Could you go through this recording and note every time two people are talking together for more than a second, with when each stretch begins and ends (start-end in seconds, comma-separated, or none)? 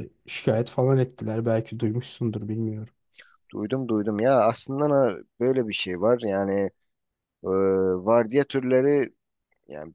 none